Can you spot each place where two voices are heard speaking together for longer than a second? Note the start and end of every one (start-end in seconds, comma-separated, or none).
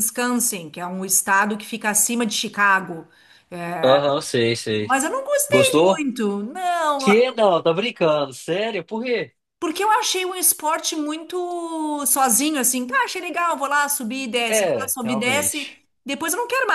14.5-15.8